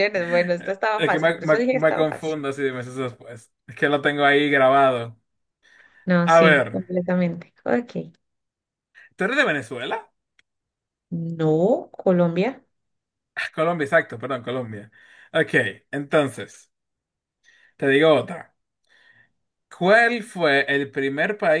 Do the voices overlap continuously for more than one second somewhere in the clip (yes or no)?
yes